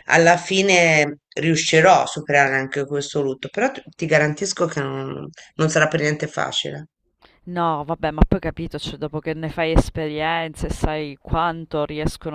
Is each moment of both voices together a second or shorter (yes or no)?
yes